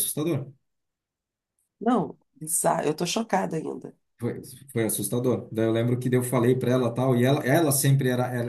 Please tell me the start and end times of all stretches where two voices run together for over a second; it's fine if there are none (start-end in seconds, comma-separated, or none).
none